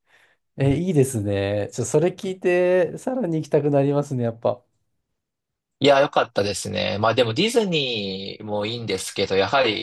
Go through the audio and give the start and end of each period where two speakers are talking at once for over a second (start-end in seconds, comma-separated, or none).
none